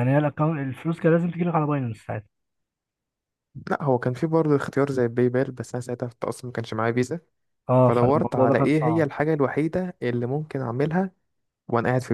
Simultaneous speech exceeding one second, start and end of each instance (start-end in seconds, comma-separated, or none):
7.8-9.1